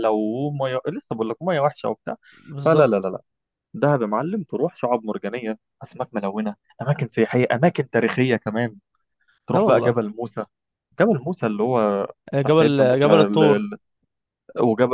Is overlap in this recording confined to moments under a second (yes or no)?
no